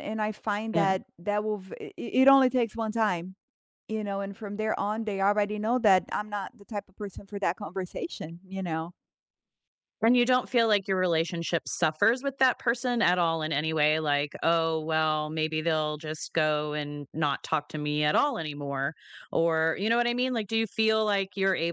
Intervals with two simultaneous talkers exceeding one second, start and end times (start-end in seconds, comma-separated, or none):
none